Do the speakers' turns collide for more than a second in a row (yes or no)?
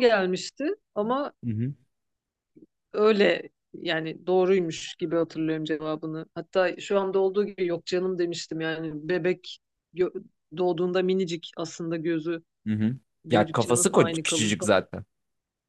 yes